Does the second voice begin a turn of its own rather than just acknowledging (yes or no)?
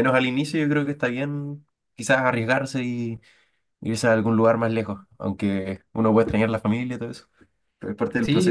yes